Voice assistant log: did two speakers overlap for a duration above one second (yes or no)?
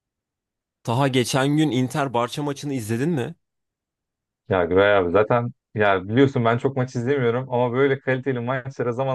no